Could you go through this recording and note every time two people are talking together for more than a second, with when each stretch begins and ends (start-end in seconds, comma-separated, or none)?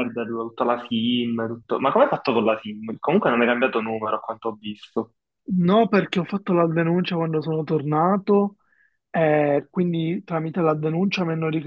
none